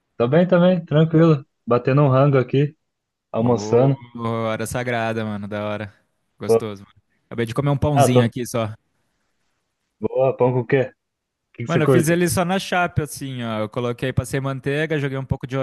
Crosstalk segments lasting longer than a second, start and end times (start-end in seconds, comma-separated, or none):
none